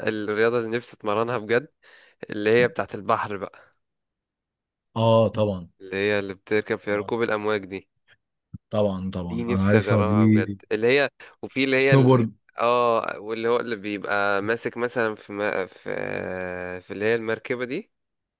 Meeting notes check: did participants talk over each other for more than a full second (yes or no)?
yes